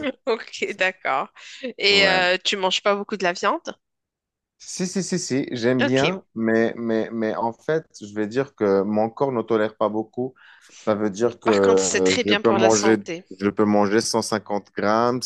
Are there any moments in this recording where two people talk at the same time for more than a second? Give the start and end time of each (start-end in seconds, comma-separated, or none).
11.4-13.0